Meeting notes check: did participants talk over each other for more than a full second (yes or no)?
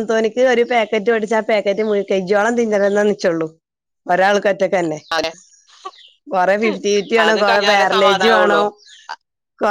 yes